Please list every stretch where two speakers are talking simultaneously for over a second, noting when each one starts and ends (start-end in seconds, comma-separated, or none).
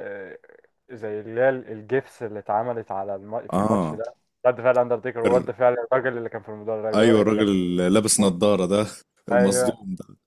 none